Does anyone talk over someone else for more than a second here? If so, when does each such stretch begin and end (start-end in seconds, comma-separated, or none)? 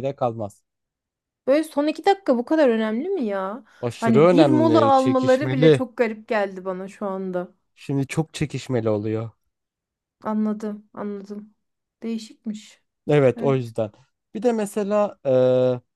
3.8-5.8